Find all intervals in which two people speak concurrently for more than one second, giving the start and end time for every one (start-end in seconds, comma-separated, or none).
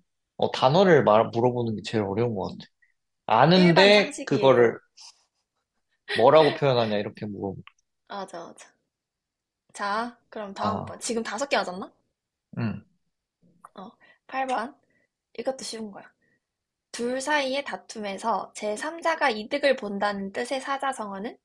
3.5-4.8